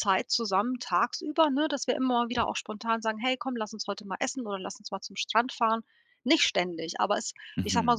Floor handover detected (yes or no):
no